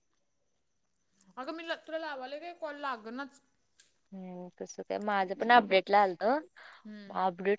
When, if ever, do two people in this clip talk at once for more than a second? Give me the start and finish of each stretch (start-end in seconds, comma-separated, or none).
none